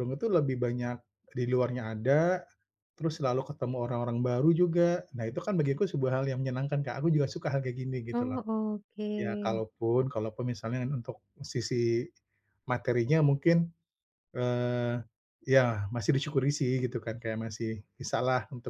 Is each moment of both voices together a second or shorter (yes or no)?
yes